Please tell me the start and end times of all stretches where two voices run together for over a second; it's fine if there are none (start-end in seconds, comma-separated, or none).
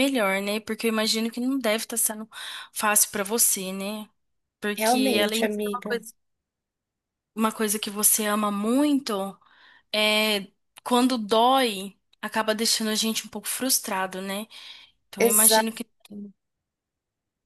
4.7-6.0